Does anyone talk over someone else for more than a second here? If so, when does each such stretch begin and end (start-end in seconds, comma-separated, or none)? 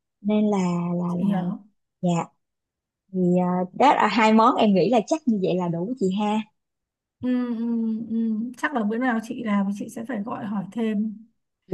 none